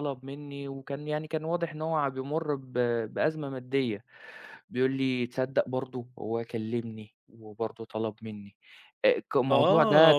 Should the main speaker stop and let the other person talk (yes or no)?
yes